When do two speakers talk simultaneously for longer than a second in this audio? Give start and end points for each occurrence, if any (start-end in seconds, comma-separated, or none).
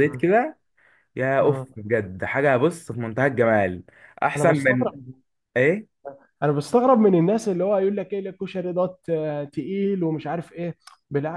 none